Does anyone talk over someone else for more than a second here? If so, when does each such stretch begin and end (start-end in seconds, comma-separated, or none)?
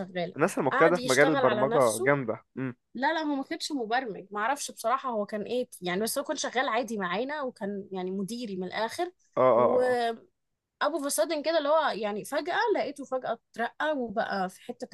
0.7-2.1